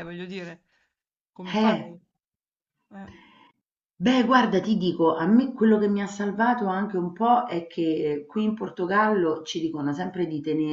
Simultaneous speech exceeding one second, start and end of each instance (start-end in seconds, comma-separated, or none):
none